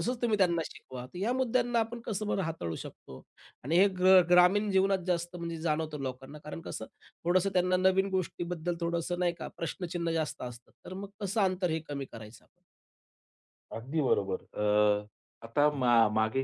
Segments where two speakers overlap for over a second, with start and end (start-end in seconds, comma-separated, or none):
none